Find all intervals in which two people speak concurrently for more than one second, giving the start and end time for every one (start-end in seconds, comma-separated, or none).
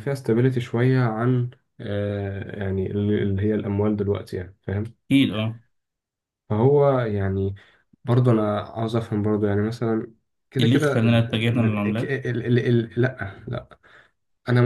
10.6-11.8